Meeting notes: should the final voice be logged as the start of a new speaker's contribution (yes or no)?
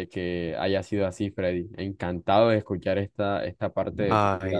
yes